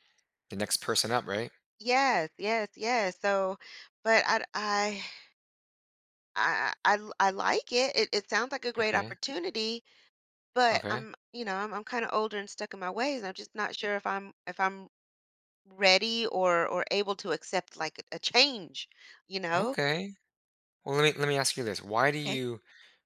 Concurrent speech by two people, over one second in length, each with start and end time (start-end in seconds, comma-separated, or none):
none